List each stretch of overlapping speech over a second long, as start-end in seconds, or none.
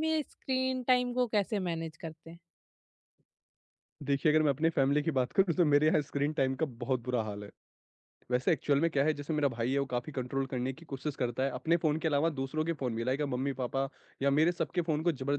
none